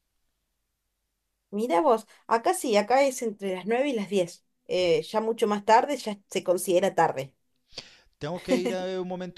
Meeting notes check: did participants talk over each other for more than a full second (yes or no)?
no